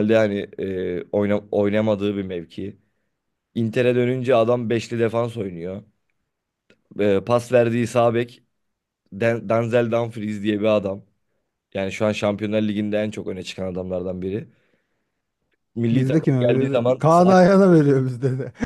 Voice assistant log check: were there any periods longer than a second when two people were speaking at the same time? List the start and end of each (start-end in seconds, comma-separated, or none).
15.9-17.4